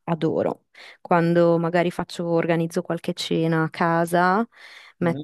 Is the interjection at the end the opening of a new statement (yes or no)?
no